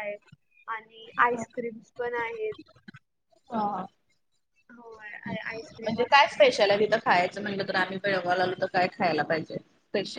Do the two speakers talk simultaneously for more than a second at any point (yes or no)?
yes